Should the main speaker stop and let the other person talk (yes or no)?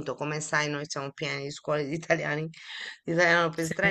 no